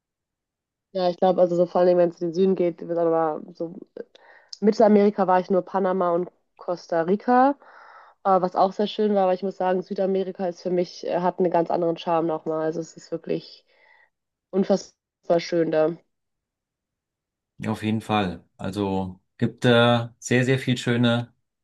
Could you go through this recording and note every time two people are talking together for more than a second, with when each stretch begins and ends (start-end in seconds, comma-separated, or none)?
none